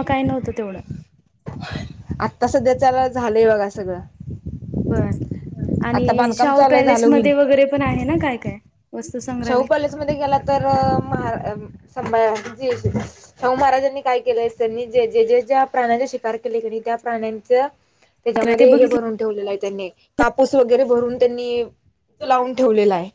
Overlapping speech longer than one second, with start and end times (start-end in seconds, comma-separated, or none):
5.9-7.3